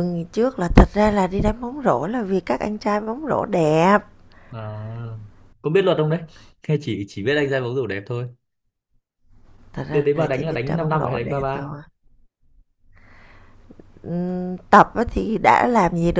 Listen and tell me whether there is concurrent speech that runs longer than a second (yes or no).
yes